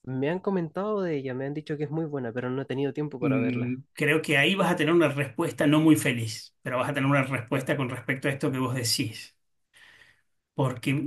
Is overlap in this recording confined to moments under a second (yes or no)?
yes